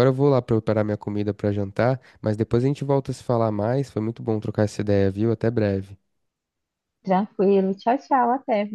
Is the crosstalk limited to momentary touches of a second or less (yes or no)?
yes